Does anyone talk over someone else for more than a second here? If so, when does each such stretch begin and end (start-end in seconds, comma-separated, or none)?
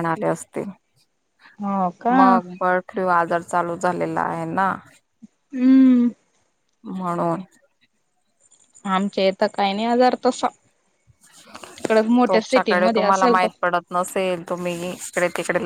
12.3-13.5